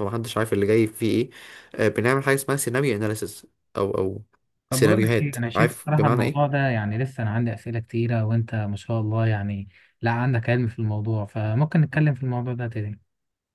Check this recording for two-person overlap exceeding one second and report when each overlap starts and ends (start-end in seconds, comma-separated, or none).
4.7-6.5